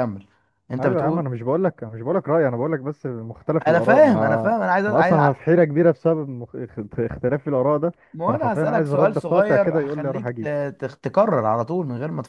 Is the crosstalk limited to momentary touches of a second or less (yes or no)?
no